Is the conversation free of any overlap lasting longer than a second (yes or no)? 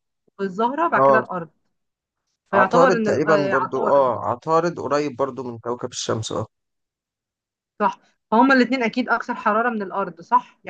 no